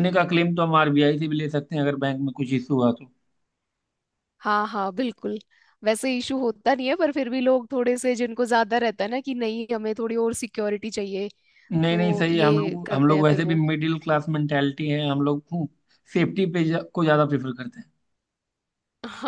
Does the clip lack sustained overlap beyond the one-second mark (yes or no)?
no